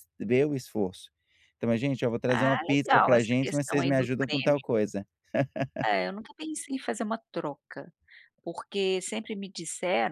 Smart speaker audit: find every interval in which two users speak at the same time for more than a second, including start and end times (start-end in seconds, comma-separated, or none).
2.3-4.6